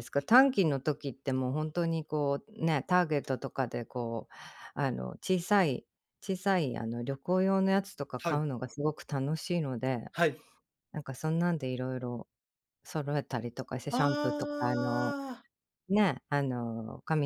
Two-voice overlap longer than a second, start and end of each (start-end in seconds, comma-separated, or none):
13.9-15.2